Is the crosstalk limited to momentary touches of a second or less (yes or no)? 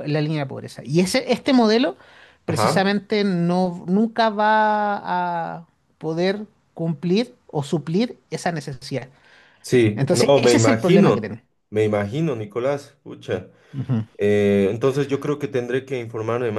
no